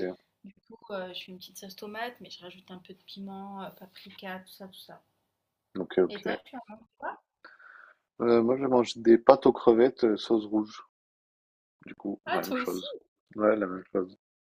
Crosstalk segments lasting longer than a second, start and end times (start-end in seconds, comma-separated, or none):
none